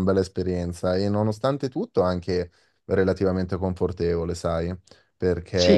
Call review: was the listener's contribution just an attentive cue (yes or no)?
yes